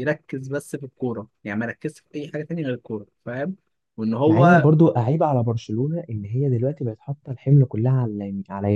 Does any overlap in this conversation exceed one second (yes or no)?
no